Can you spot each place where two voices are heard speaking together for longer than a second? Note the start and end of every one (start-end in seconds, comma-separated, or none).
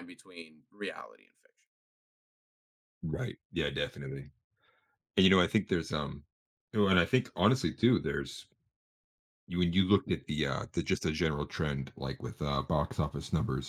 none